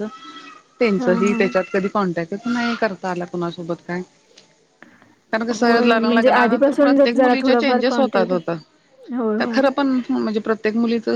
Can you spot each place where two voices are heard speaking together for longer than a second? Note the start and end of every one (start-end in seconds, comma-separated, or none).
5.6-8.3